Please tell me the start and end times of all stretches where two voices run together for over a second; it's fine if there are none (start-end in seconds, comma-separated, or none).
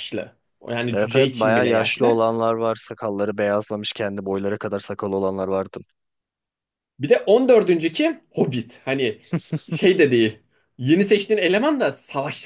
0.9-2.2